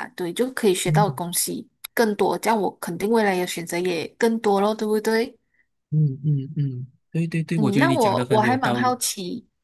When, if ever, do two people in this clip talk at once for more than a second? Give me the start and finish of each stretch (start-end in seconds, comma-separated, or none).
7.5-9.0